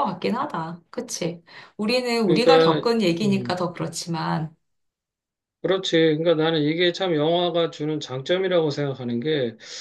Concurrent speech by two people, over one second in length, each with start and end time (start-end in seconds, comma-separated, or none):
2.3-3.6